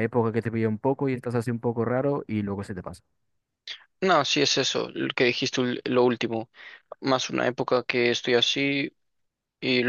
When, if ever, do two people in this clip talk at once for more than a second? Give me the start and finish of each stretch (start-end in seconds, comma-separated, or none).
none